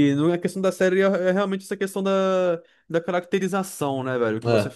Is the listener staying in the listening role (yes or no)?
yes